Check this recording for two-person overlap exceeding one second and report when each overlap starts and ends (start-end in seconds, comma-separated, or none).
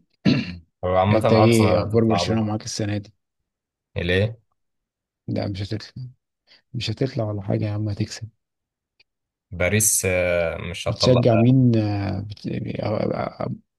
1.1-2.6